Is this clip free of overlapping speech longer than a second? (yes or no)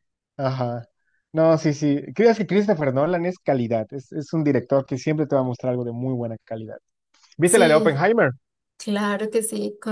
yes